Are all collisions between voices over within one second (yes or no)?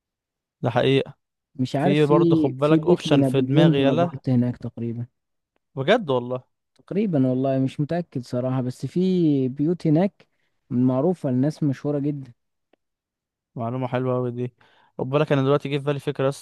no